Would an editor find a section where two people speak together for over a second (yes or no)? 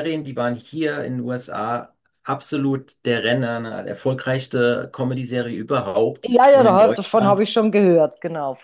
yes